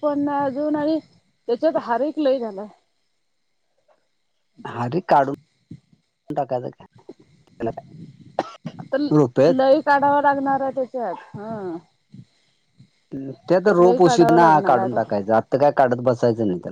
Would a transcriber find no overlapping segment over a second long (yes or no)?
no